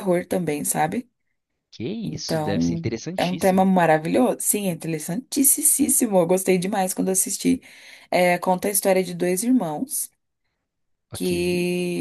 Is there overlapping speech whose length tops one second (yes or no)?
yes